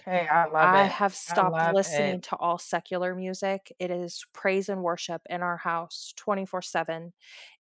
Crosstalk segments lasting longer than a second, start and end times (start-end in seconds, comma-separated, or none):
0.6-2.2